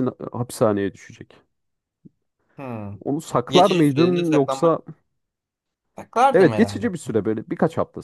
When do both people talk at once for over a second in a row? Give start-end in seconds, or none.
3.5-4.8